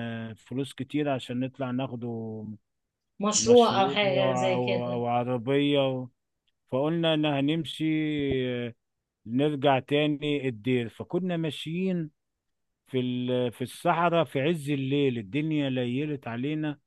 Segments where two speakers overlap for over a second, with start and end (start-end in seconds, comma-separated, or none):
3.4-5.0